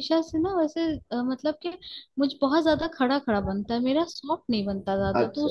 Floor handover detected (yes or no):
yes